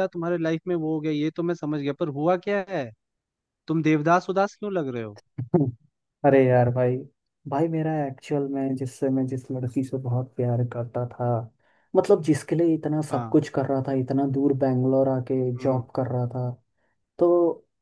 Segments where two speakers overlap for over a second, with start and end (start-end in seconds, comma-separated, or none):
none